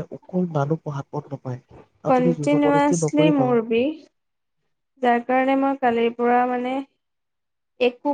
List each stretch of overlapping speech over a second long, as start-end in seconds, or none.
2.1-3.6